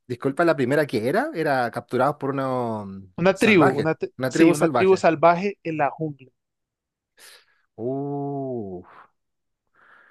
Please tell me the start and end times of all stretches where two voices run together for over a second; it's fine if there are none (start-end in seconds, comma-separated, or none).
3.2-5.0